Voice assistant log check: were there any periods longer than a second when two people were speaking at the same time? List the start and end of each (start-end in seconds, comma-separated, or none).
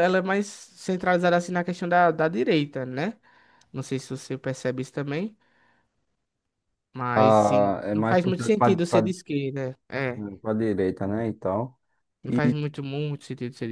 7.1-9.1